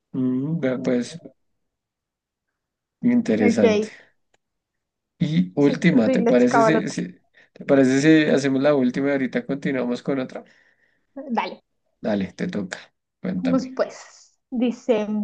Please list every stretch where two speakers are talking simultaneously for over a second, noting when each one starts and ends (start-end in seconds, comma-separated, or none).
5.6-6.9